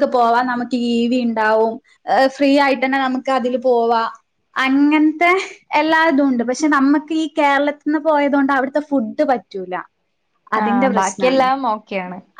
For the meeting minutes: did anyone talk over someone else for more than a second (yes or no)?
no